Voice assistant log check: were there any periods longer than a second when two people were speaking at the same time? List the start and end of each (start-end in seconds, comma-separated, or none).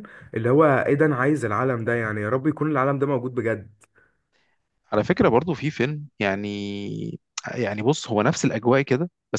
none